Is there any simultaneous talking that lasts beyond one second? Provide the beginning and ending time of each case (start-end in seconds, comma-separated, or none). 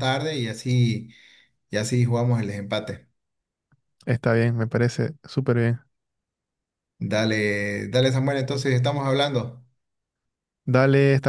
none